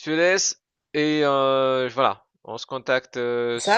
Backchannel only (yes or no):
yes